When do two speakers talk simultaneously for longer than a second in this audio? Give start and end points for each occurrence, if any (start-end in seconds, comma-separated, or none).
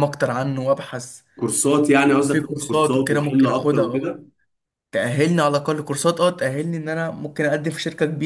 2.3-4.2